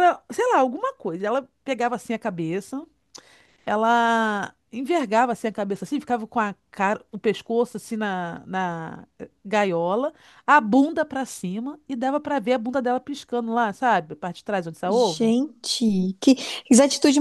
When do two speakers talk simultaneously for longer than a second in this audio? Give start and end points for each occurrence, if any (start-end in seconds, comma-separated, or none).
none